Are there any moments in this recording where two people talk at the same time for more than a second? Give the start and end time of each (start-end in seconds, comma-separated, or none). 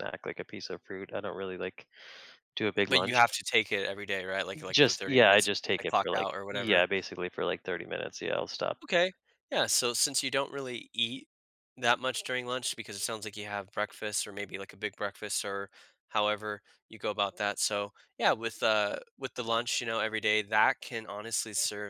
4.7-6.8